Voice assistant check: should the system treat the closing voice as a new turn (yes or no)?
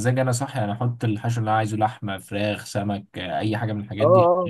yes